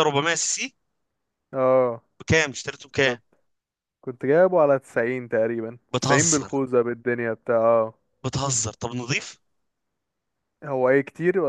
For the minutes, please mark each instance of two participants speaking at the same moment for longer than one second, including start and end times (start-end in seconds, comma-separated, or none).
none